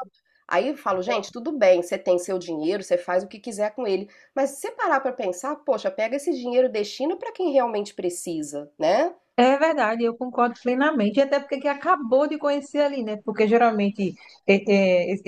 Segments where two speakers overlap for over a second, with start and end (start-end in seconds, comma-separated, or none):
none